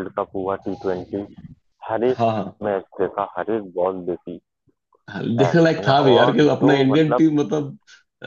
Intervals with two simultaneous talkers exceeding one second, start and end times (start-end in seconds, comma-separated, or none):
5.4-7.2